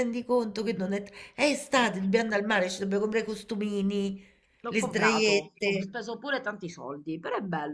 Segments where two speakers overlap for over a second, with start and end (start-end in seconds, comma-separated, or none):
4.7-5.9